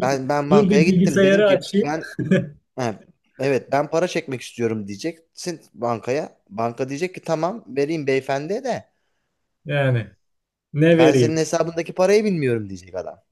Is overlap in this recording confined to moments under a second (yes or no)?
no